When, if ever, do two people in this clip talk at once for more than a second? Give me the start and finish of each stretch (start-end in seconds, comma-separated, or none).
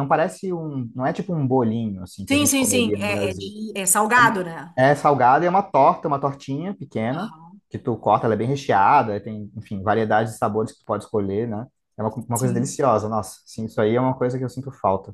2.3-3.5